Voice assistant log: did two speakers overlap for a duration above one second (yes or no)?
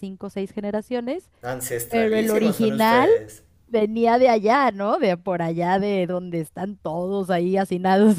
yes